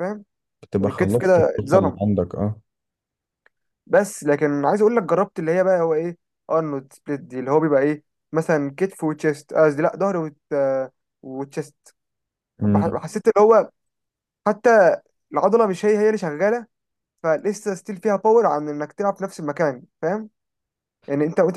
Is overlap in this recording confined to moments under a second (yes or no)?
no